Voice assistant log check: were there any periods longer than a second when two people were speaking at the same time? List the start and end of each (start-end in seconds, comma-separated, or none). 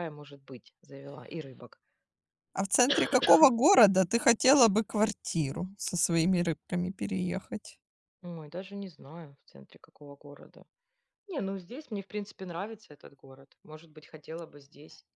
none